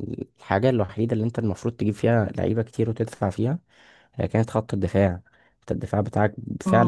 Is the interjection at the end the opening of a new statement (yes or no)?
yes